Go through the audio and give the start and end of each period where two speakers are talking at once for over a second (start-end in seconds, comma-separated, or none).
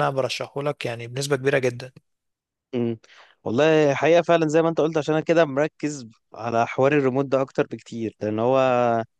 none